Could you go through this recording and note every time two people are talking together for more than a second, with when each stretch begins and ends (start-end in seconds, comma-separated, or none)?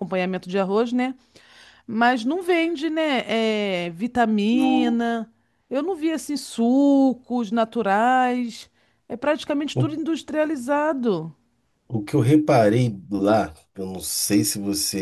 none